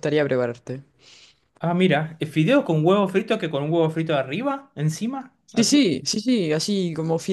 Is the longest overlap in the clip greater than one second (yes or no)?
no